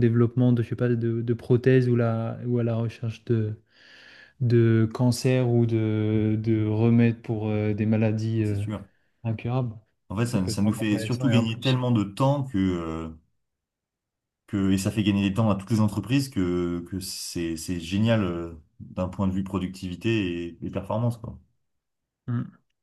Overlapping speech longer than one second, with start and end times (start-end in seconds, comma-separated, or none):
10.3-11.8